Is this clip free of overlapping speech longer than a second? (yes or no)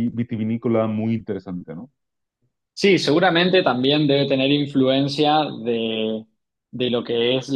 yes